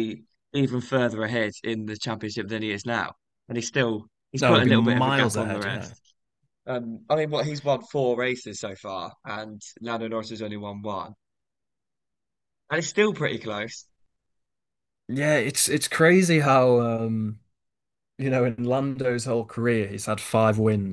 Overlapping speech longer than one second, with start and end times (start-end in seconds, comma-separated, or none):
4.4-5.9